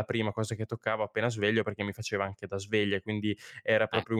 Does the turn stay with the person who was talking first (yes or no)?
yes